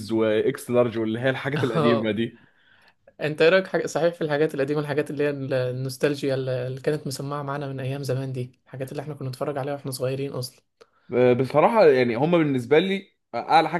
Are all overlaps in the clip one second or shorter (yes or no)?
yes